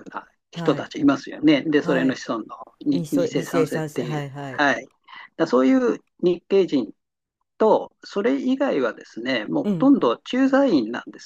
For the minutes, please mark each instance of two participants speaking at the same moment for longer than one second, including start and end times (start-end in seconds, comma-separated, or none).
2.9-4.6